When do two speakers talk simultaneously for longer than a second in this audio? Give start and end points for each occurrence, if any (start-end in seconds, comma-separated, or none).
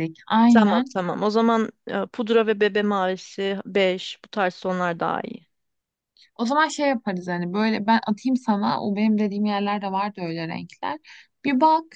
none